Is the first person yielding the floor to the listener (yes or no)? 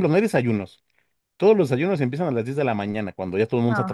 no